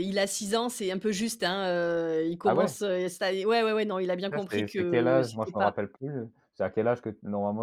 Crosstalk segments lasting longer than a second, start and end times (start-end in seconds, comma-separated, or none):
4.3-5.7